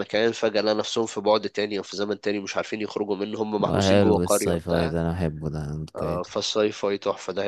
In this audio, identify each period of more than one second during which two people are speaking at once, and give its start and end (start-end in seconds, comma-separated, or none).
3.7-5.0